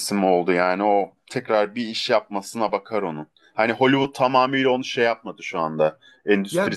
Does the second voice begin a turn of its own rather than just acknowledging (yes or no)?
no